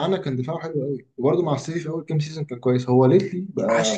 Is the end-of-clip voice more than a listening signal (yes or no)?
yes